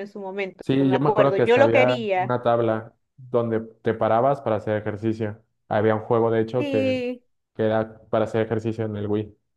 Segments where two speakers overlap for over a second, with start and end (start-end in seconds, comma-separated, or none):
0.6-2.4